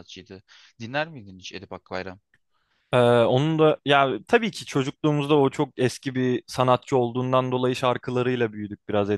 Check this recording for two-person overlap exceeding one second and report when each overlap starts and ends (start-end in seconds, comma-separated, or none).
none